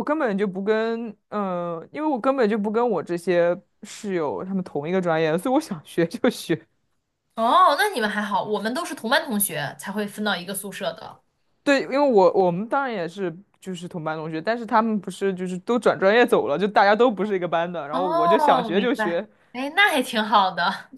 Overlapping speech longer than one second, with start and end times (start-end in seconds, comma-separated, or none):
17.9-19.3